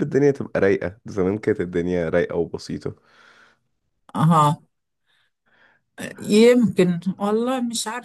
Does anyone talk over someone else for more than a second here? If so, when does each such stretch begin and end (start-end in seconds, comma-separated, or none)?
none